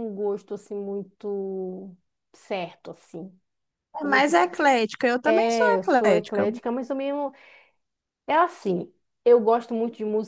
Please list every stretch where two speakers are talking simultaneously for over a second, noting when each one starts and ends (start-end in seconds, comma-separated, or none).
5.2-6.5